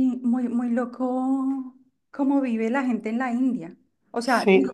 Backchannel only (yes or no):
yes